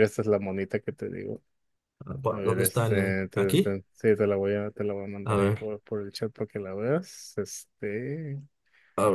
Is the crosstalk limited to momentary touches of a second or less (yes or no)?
no